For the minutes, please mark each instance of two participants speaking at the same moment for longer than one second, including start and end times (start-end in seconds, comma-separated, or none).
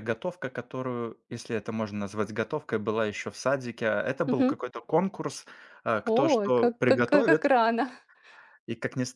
6.1-7.4